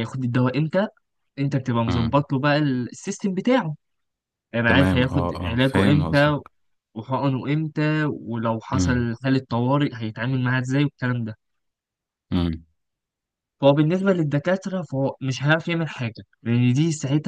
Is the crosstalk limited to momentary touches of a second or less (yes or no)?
no